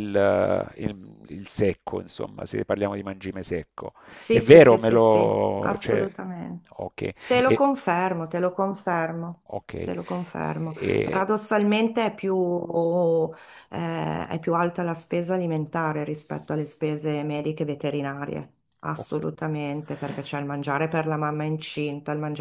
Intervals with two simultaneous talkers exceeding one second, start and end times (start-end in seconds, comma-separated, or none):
4.3-6.1